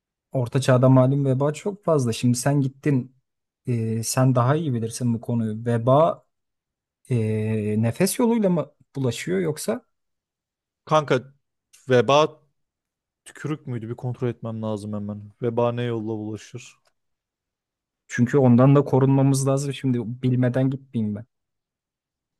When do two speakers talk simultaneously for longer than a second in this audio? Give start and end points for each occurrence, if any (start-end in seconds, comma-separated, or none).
none